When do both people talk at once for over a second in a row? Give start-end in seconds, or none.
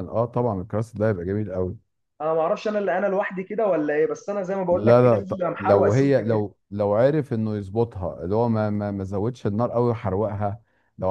4.7-6.4